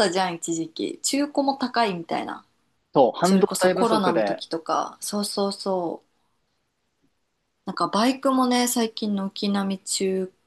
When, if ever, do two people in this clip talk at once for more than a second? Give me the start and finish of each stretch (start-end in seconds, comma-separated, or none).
3.2-4.4